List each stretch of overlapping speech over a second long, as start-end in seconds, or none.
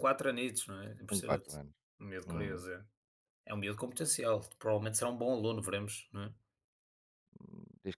none